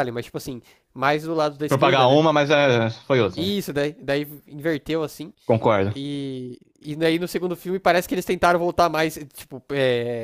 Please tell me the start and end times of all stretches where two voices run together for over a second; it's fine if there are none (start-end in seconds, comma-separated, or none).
none